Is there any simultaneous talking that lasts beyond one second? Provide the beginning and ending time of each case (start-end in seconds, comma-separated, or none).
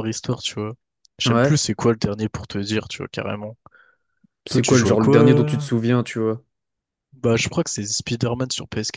4.5-5.7